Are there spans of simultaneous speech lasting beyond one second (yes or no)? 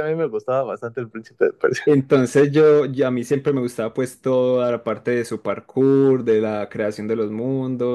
no